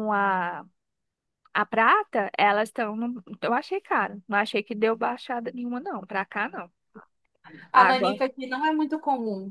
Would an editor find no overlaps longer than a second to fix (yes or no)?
yes